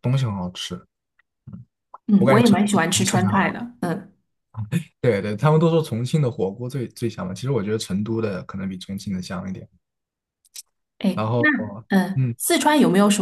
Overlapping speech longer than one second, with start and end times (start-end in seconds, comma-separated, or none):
2.2-3.5